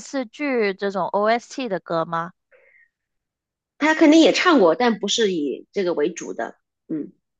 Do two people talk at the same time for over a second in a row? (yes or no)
no